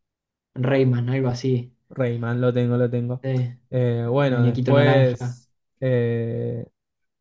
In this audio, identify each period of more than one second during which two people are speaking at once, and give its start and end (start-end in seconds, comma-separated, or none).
4.0-5.4